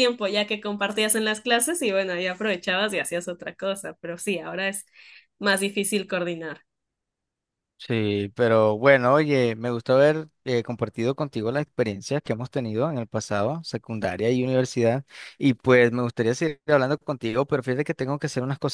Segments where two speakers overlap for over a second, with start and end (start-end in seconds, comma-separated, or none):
none